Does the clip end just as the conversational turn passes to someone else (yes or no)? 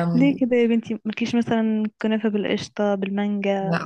yes